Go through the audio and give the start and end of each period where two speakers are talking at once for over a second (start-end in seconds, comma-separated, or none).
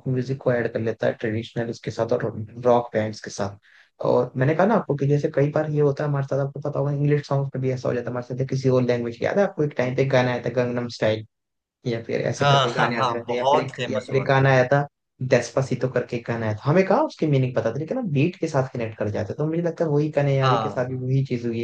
12.4-14.5